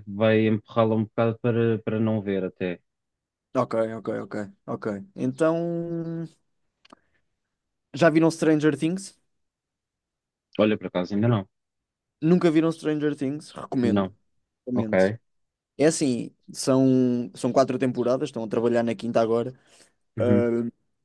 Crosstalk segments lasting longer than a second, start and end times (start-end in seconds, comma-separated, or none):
none